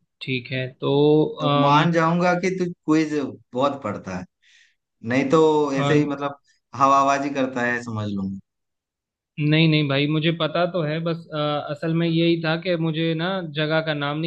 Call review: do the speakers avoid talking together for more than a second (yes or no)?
yes